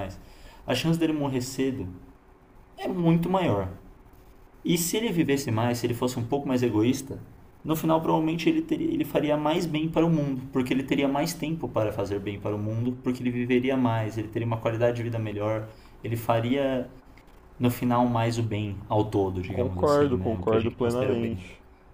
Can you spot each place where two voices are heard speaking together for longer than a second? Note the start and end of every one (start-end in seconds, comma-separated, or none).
19.5-21.4